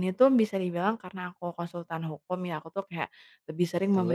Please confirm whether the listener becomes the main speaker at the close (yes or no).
no